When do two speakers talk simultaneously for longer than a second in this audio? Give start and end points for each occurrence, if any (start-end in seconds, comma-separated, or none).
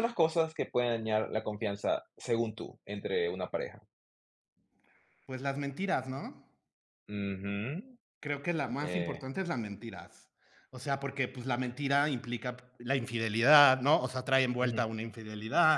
none